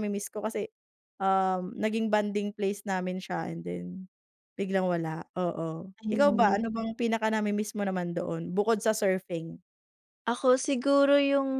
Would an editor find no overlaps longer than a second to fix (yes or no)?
yes